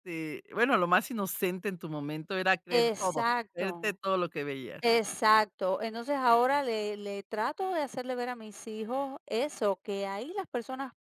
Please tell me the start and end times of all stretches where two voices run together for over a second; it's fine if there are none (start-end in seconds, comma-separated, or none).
2.7-4.0